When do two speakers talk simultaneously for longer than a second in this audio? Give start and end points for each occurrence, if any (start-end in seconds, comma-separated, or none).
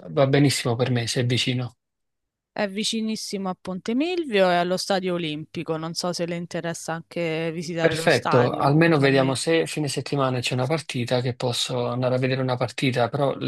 7.8-9.4